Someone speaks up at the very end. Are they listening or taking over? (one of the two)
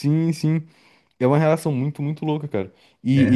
listening